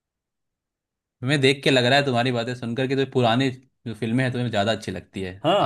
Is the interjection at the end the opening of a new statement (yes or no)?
yes